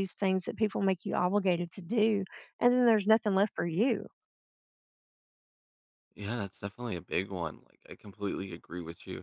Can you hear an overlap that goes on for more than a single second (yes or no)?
no